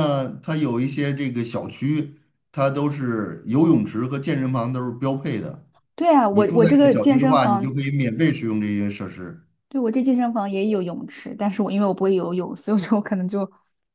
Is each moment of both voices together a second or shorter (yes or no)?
no